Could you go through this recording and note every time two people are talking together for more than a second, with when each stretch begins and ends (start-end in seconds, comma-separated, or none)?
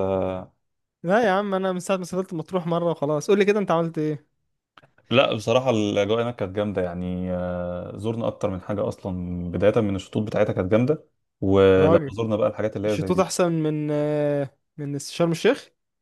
none